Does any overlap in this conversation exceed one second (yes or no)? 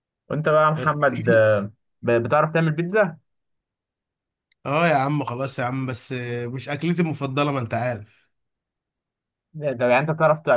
no